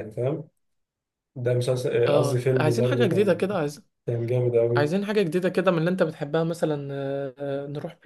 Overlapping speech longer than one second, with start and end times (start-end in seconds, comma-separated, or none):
2.1-3.5